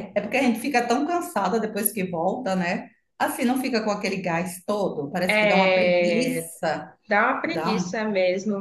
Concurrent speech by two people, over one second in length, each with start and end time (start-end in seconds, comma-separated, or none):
5.3-6.5